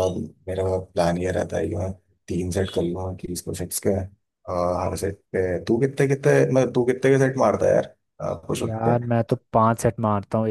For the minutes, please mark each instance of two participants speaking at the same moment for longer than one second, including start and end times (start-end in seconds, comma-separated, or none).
none